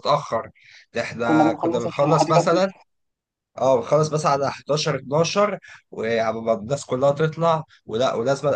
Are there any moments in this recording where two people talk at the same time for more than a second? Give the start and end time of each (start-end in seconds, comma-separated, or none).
1.3-2.7